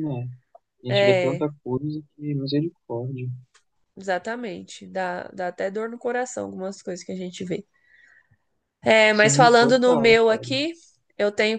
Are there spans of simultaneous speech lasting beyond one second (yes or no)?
yes